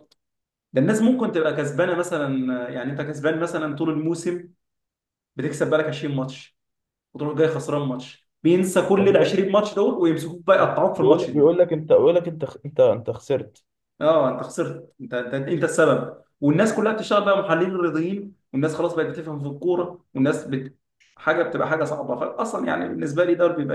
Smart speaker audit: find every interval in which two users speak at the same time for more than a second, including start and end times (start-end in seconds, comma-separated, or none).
none